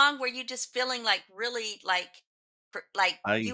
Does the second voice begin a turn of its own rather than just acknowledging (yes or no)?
no